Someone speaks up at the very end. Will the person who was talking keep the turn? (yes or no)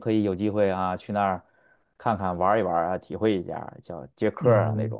no